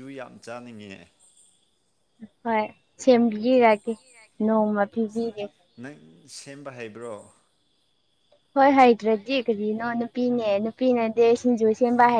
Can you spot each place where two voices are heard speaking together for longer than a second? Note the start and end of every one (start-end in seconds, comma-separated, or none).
none